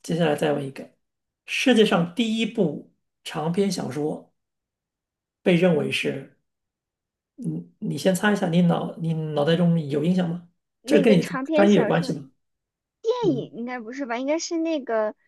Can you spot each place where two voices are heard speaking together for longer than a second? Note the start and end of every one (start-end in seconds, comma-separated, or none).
10.8-12.1